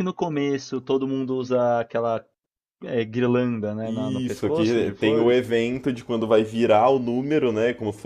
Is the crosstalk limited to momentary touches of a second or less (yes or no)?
no